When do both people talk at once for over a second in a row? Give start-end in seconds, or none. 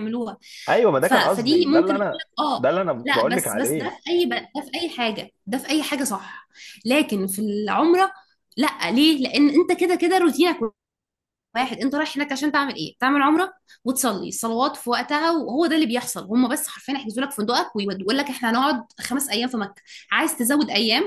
1.1-4.0